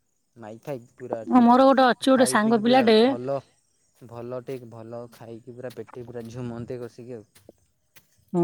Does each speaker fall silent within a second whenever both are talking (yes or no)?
no